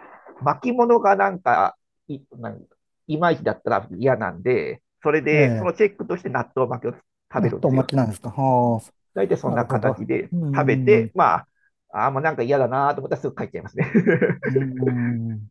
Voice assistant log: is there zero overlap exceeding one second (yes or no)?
no